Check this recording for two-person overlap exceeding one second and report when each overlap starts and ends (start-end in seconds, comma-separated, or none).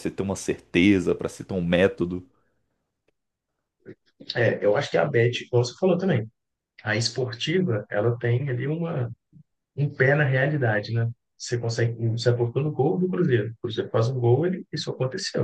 none